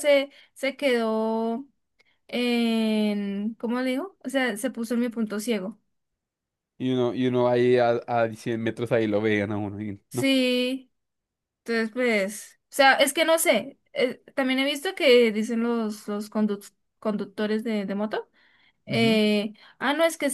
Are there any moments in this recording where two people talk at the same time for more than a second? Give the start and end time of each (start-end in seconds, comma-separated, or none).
none